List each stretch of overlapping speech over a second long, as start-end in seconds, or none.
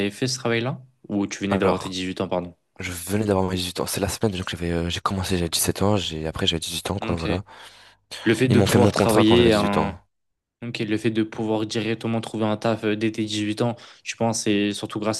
8.5-9.9